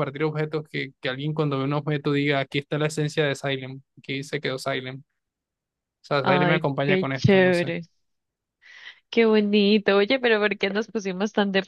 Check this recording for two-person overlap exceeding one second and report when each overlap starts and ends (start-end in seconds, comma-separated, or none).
6.2-7.7